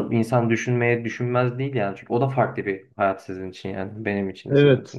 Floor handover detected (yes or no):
yes